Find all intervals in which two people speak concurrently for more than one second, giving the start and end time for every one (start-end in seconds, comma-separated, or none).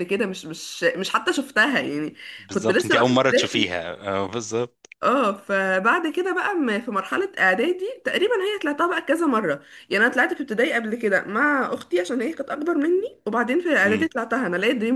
2.5-3.8